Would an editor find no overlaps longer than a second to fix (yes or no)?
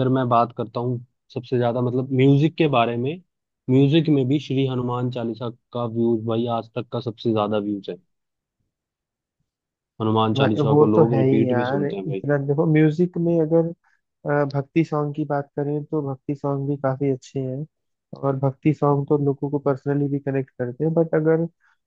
no